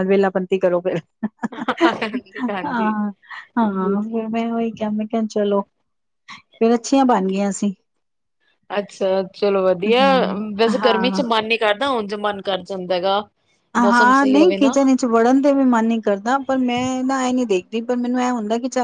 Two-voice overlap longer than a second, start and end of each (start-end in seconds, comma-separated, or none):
none